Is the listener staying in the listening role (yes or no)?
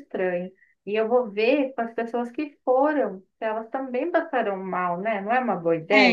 no